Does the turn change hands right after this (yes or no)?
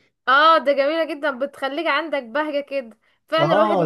yes